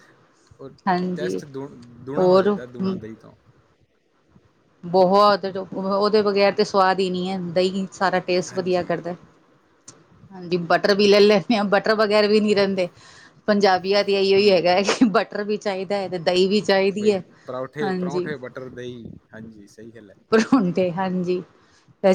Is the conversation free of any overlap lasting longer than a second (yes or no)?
yes